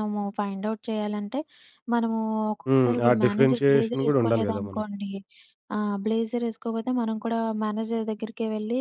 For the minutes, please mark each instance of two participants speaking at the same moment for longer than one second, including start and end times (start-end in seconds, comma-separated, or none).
2.7-4.8